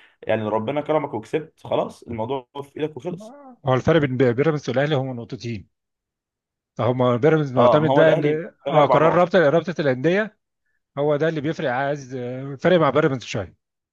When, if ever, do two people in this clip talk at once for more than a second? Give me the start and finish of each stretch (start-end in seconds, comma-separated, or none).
7.5-9.3